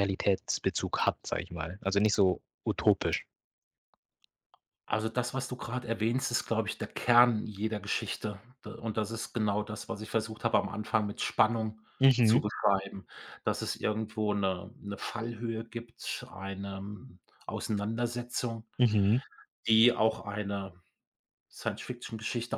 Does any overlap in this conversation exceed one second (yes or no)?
no